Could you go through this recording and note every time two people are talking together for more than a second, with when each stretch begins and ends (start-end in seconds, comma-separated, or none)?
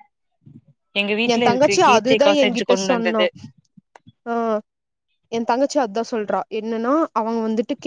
1.3-3.2